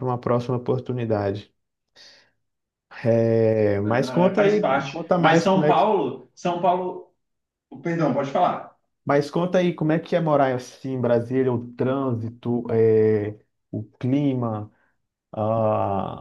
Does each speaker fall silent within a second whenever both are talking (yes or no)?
no